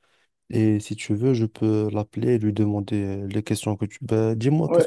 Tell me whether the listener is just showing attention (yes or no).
no